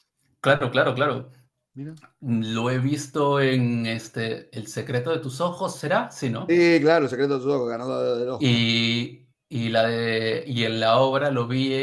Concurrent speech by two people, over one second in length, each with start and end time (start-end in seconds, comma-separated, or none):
none